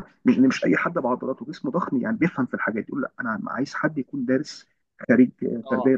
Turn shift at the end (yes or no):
no